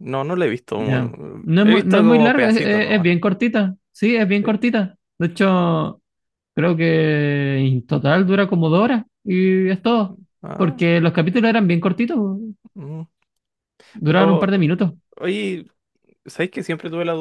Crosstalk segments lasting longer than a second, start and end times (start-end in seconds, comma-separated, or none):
0.8-3.1